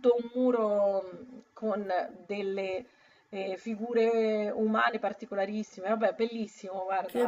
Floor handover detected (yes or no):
yes